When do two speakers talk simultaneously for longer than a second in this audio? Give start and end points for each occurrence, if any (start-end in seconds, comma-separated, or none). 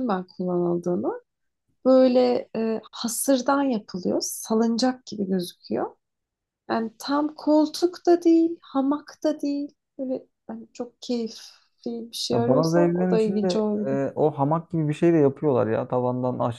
12.3-14.0